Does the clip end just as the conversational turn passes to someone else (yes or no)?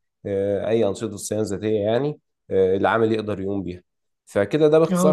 yes